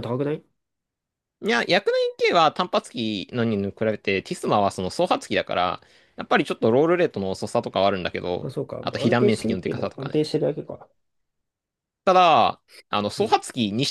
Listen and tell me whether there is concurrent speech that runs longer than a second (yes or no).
yes